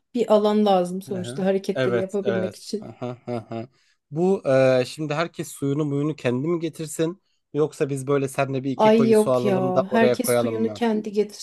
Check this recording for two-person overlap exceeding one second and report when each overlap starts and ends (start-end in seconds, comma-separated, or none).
1.1-2.9, 8.8-10.8